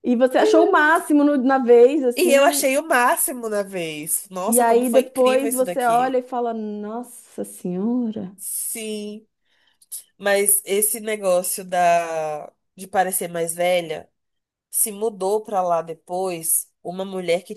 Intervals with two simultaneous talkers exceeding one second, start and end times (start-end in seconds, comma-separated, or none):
4.5-6.2